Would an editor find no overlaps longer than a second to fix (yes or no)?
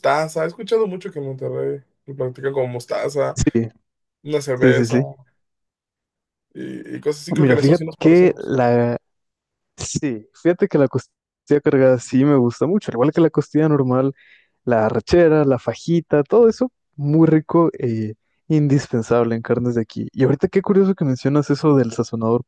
no